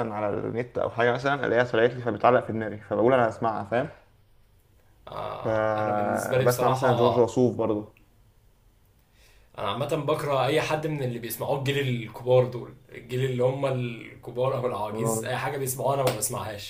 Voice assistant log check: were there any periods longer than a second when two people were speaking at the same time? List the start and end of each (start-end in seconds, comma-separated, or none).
5.4-6.9